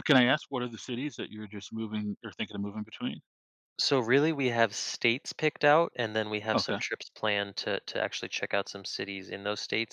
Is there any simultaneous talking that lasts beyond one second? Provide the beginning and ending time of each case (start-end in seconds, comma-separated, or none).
none